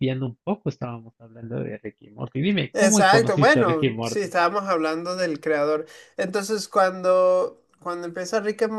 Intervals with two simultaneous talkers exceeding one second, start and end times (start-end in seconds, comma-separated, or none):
2.7-4.3